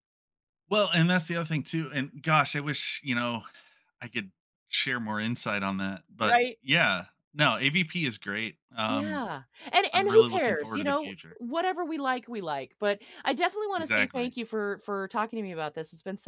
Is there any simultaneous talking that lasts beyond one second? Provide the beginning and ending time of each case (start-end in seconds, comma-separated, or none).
9.9-11.4